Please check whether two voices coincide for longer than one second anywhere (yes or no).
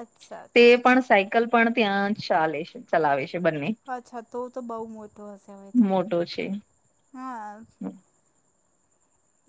no